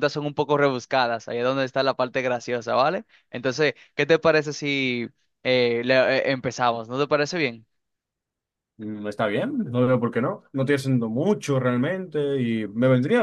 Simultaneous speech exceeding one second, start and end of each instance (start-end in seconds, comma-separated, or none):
none